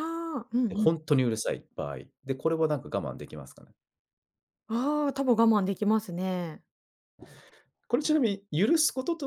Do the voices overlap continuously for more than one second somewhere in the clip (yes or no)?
no